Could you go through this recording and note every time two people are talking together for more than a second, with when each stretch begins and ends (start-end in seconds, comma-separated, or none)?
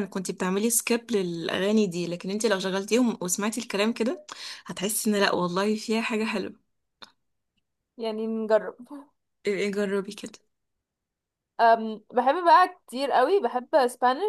none